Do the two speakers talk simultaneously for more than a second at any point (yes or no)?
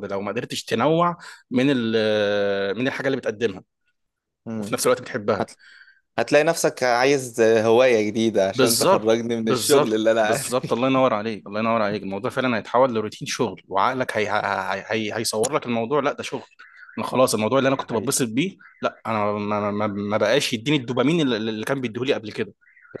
yes